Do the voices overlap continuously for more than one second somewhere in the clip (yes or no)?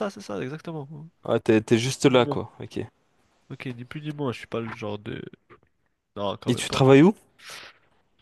no